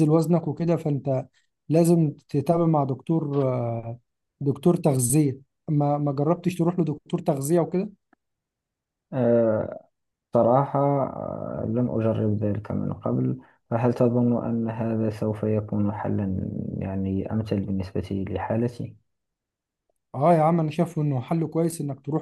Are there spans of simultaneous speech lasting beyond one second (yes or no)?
no